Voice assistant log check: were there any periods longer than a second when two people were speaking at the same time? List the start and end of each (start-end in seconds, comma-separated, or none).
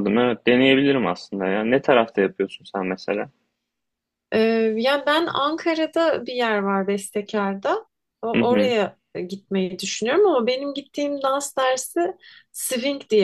none